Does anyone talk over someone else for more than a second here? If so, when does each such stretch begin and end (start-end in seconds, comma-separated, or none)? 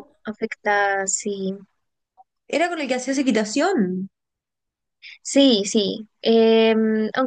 none